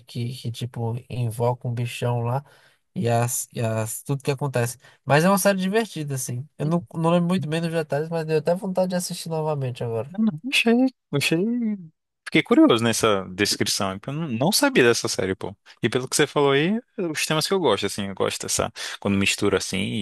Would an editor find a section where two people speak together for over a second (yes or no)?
no